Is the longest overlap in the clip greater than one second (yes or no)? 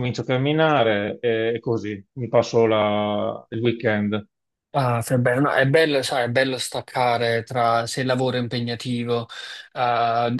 no